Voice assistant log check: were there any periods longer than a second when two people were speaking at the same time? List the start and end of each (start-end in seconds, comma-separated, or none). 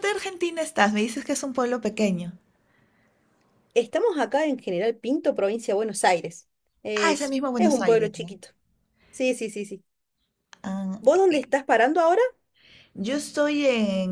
7.0-8.3